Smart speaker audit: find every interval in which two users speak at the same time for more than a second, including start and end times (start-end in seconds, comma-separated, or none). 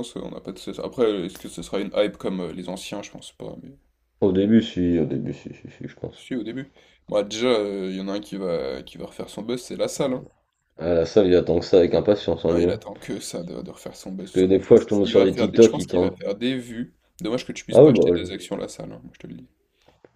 14.2-16.1